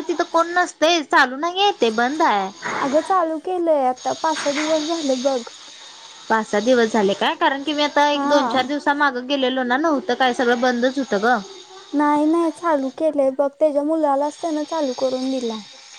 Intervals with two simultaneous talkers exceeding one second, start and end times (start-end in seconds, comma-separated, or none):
none